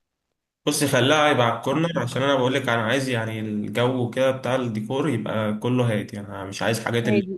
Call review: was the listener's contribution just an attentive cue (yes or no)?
yes